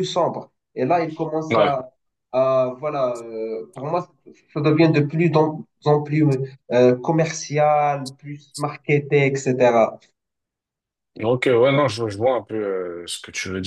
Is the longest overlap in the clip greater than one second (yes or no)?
no